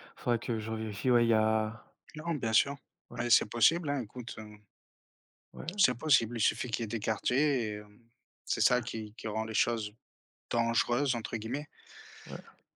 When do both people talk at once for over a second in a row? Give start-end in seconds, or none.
none